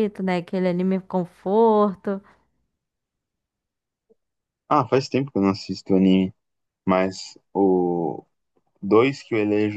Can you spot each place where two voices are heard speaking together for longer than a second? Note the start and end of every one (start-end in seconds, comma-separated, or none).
none